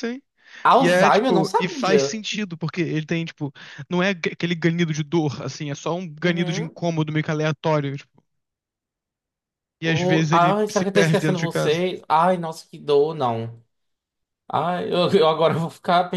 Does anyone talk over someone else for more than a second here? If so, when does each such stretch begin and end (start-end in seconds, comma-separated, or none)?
0.8-2.2, 9.8-11.8